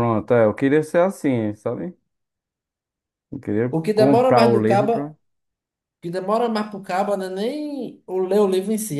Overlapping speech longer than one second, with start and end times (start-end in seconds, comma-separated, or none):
3.7-5.1